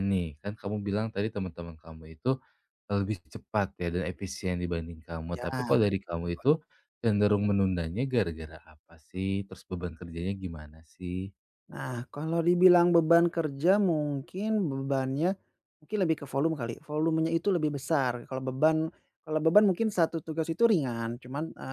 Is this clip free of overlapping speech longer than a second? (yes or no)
yes